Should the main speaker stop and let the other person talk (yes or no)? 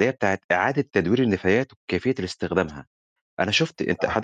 no